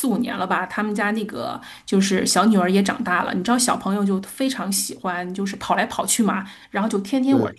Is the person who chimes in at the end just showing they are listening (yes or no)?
yes